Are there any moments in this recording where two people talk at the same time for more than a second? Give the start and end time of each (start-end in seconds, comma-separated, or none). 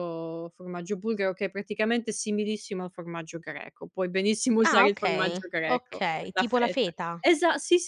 4.6-7.2